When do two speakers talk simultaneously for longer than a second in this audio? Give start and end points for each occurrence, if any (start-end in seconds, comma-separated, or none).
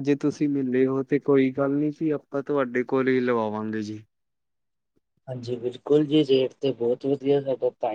none